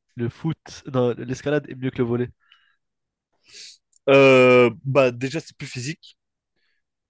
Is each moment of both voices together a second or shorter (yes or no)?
yes